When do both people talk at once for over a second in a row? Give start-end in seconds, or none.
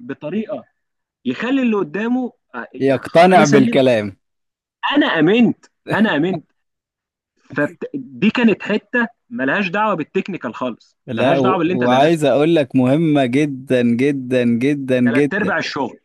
11.1-12.3